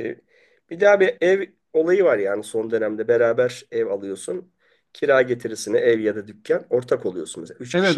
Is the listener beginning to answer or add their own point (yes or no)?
yes